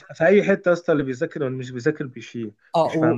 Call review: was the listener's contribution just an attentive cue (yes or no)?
no